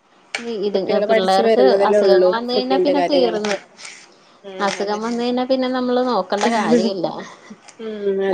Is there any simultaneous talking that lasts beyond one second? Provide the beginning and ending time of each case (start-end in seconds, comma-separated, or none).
0.7-3.4